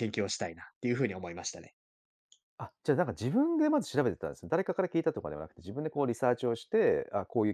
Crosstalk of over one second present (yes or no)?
no